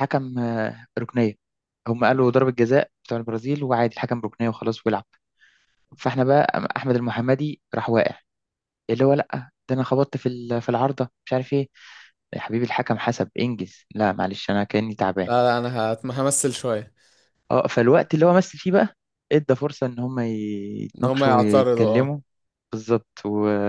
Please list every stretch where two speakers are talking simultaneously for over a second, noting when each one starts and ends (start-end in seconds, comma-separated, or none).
21.0-22.2